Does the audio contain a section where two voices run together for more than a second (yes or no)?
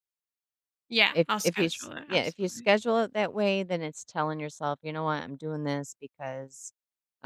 yes